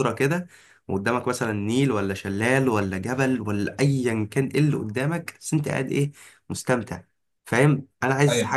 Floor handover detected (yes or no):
no